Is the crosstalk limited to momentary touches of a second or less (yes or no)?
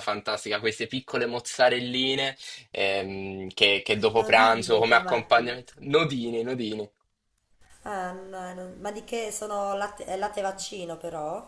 no